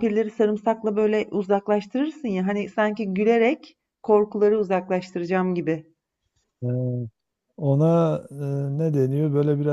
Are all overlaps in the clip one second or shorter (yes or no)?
yes